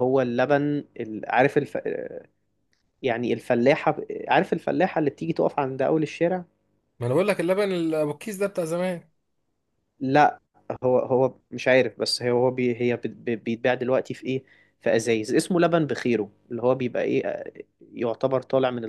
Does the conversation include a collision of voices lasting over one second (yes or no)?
no